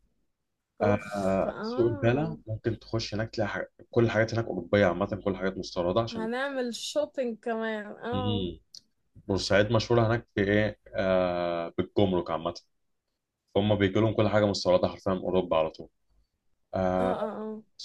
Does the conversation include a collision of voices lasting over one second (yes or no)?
yes